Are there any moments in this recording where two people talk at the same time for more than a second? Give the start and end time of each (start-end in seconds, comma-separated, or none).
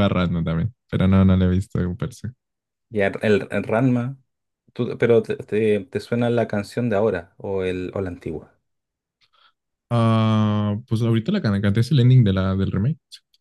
none